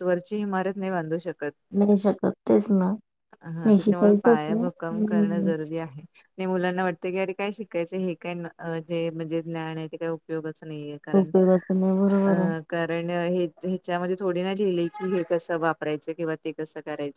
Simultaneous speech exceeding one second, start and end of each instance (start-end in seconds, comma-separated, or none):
3.6-5.5